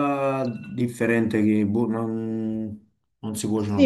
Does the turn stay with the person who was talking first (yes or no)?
no